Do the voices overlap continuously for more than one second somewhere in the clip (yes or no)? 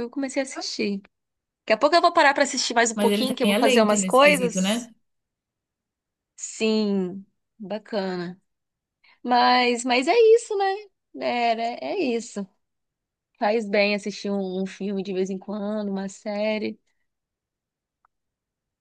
yes